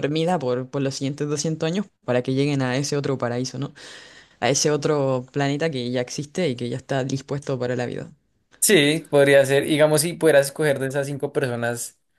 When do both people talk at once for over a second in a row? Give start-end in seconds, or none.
none